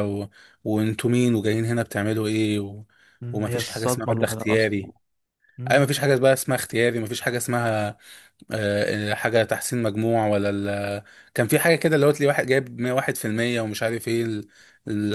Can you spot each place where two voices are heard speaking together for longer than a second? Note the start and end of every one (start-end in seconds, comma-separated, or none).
3.3-4.8